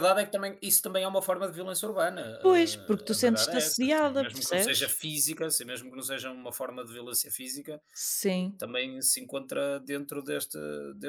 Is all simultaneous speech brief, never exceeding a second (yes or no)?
no